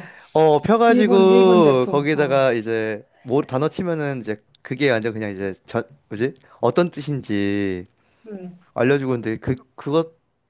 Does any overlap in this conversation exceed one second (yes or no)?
yes